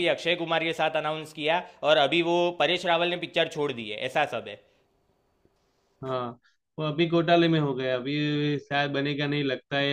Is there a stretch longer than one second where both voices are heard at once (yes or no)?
no